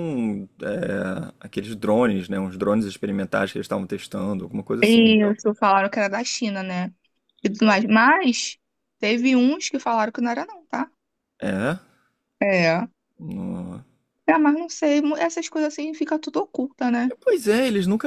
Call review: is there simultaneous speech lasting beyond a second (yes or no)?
no